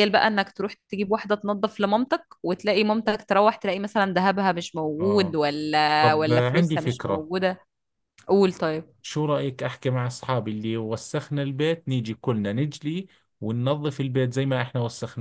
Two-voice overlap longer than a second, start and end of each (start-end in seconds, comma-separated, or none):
6.0-7.3